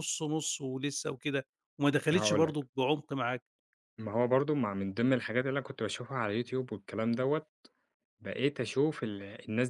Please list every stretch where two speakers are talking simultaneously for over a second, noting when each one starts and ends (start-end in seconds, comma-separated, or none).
none